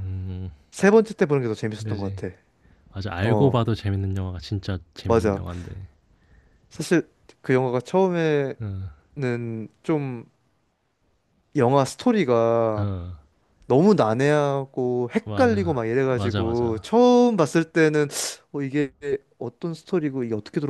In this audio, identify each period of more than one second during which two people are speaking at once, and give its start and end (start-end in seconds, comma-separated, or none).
15.2-16.8